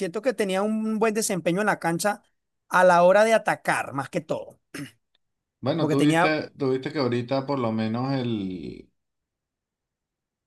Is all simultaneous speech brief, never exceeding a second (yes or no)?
yes